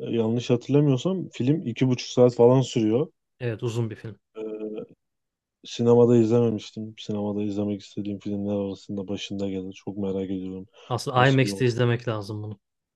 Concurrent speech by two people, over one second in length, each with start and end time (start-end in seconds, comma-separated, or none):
none